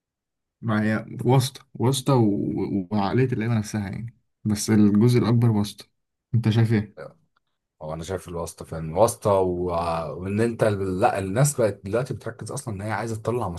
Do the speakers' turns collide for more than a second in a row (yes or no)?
no